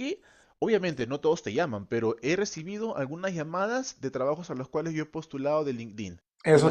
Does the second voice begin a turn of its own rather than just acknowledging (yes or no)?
yes